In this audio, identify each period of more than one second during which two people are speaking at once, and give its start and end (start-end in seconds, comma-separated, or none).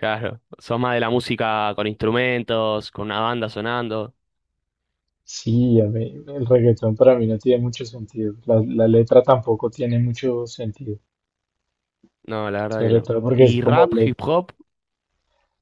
12.7-14.1